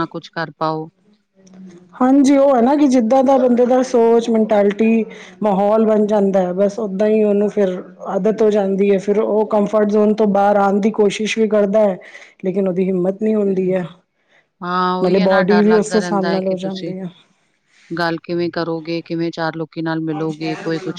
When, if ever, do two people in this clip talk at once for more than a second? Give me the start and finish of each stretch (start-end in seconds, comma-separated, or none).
15.0-16.9